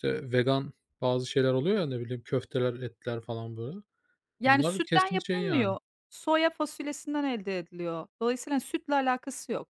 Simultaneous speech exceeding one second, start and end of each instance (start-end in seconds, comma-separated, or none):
4.4-5.8